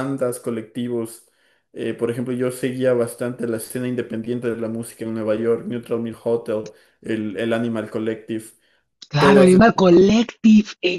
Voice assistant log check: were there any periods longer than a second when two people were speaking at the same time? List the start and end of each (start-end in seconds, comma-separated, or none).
none